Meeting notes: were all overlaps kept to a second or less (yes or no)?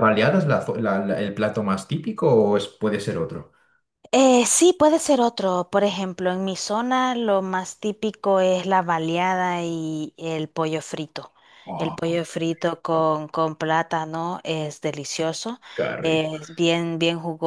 yes